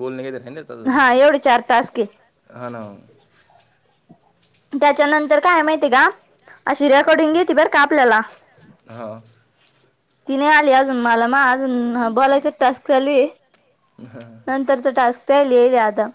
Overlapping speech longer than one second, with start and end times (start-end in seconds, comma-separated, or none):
none